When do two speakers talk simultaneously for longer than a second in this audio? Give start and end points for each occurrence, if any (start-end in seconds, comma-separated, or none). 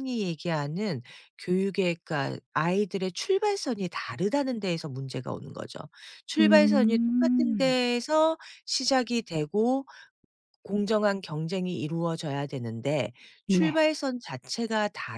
6.4-7.8